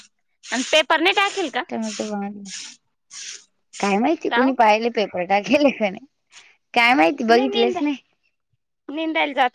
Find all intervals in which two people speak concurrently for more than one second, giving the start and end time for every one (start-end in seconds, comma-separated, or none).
none